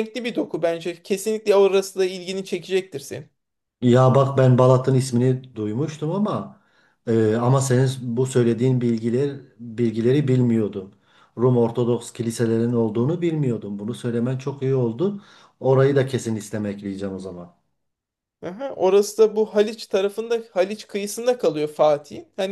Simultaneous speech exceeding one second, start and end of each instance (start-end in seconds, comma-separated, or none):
none